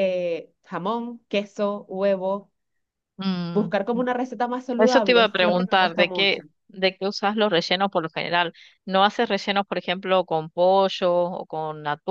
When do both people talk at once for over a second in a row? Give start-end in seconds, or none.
4.8-6.4